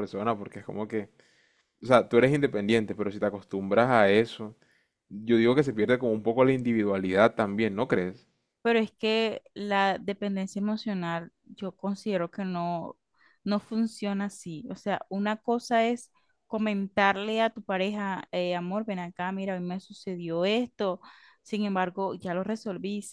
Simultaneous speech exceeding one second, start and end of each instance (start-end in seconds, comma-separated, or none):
none